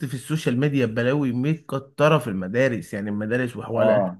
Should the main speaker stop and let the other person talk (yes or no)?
yes